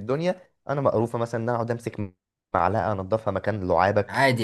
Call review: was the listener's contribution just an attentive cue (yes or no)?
no